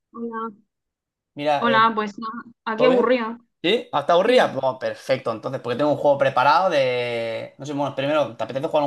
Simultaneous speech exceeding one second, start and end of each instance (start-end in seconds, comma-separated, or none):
none